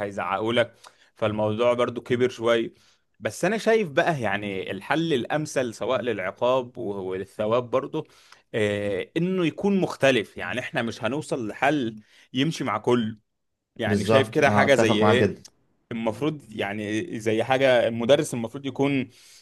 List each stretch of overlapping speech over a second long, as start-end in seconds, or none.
13.9-15.3